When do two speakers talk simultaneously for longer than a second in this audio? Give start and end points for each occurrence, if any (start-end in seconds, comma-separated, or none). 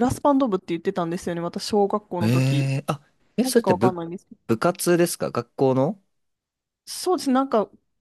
none